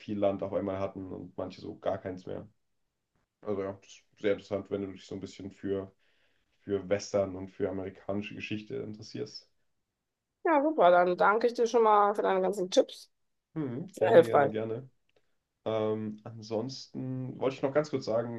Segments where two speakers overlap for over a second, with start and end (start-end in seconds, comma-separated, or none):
none